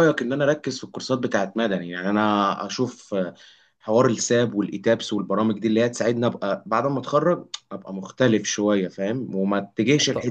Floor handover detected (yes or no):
no